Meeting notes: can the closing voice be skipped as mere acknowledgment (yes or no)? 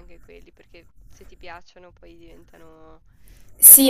no